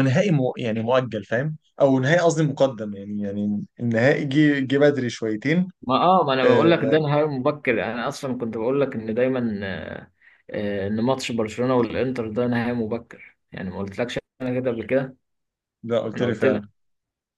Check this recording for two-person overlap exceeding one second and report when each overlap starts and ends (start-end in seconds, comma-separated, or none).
none